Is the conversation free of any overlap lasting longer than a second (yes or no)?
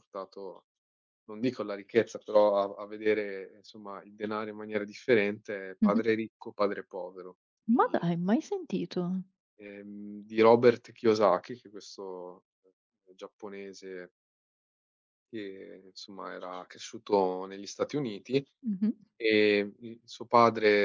yes